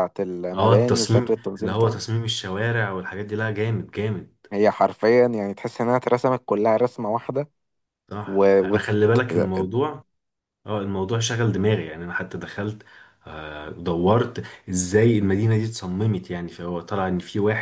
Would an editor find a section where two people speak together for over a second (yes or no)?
yes